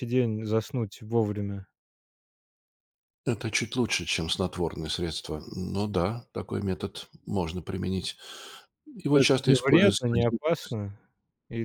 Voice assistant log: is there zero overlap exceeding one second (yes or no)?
no